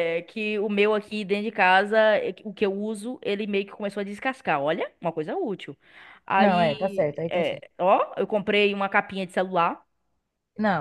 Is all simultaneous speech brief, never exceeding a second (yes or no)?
no